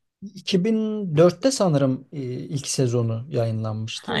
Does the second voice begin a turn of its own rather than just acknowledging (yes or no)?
no